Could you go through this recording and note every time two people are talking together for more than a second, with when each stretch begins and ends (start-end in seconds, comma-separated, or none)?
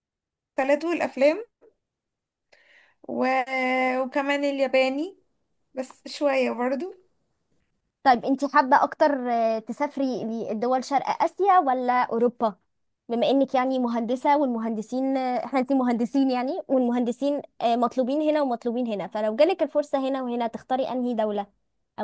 none